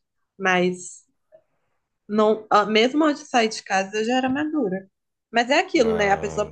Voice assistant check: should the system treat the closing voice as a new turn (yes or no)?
no